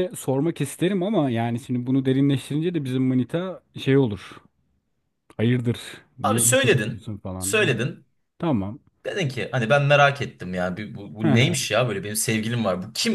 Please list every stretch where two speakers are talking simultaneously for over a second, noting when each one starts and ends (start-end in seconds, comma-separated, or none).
6.2-7.8